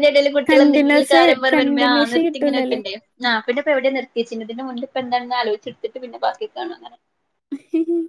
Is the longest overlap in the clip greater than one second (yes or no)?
yes